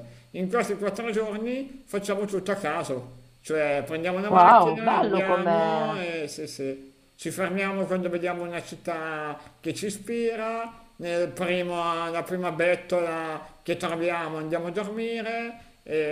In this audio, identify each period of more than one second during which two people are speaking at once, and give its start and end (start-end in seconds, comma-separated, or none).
4.3-6.0